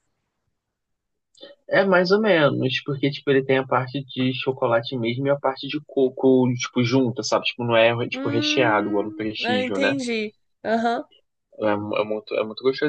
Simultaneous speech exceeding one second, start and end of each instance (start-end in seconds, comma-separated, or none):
8.1-9.9